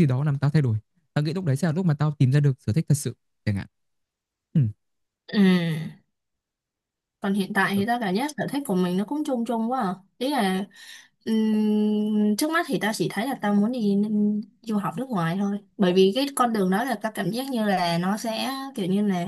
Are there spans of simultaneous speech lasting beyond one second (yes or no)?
no